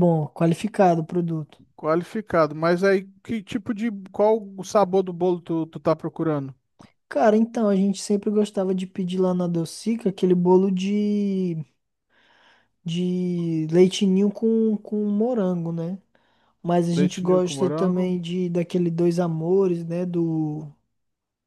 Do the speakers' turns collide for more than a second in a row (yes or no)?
yes